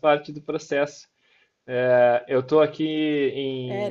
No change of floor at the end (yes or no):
yes